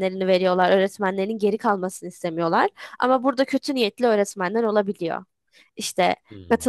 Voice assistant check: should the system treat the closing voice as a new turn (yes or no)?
no